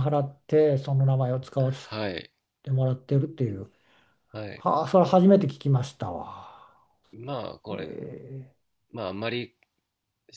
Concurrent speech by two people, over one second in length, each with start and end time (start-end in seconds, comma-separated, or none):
none